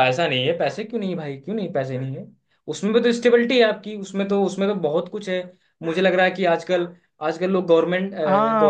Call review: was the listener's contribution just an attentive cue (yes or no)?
no